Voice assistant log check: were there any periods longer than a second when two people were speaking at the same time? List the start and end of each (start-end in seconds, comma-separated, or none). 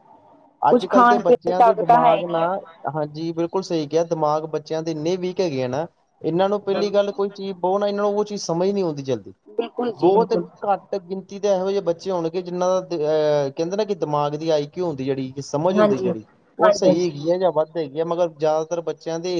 0.7-2.4